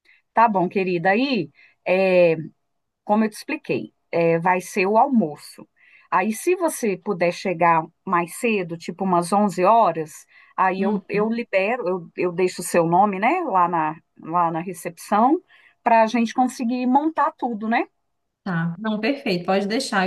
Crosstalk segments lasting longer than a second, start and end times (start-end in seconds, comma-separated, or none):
none